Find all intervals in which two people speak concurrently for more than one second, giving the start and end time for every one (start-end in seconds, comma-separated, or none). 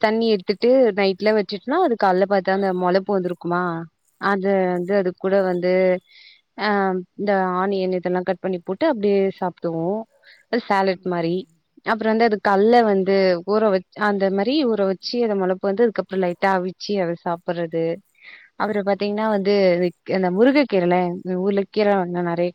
none